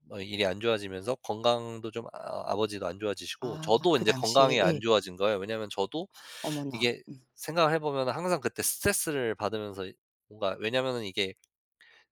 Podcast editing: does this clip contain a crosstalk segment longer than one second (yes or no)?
yes